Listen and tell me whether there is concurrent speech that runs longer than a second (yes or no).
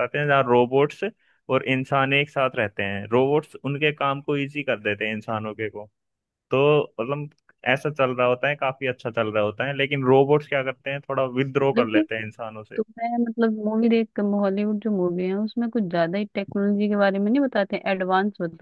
no